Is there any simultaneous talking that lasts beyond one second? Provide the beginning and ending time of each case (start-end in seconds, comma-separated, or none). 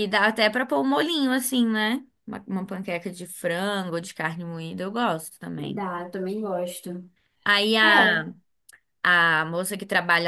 none